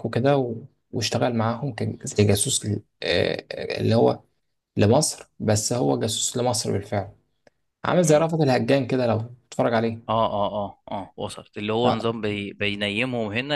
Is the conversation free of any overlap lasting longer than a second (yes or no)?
yes